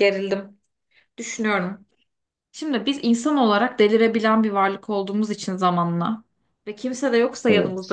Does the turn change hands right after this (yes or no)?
no